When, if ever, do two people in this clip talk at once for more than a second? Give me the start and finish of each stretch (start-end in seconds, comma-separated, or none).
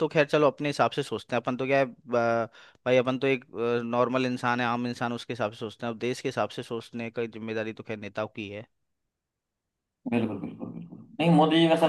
none